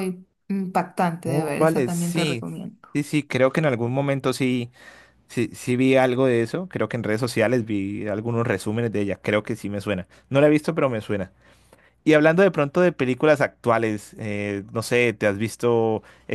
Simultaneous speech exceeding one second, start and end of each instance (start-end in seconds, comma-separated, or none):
1.2-2.4